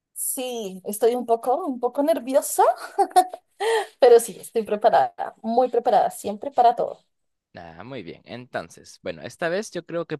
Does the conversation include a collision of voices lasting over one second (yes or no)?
no